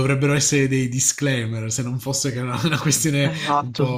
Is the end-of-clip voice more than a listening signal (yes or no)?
yes